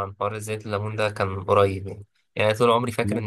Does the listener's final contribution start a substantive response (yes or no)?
no